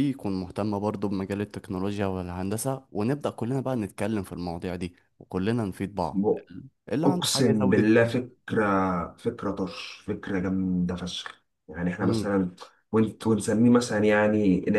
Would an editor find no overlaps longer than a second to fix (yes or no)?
no